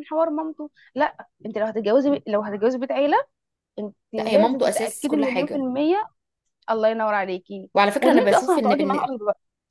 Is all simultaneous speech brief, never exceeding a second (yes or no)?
no